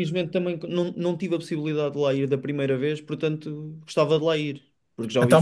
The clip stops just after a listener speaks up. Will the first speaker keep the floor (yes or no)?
no